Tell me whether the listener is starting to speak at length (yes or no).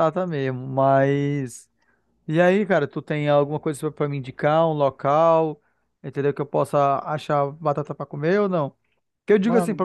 no